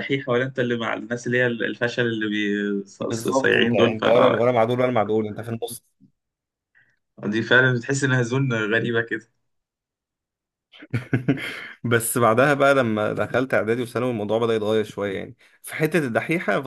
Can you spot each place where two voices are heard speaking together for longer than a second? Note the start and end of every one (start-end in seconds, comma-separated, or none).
3.0-4.4